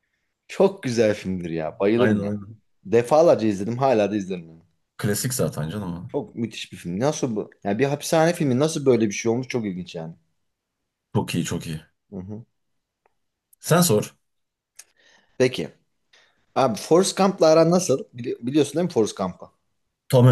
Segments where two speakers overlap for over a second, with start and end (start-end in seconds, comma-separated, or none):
none